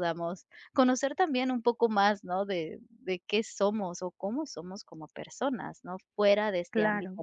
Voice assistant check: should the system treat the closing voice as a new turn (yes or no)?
no